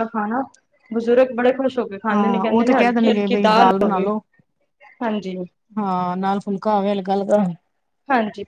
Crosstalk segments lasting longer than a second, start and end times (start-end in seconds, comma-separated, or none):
2.1-4.1